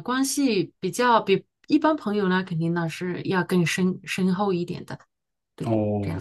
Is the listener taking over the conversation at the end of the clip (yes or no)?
yes